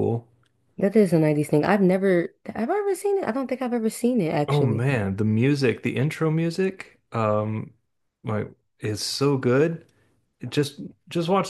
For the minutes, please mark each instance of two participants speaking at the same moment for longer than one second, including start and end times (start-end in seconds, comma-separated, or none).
none